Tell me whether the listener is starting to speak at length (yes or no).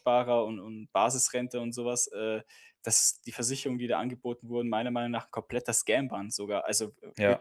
no